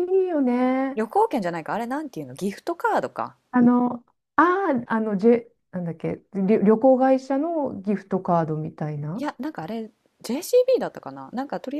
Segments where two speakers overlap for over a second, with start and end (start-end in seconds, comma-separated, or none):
none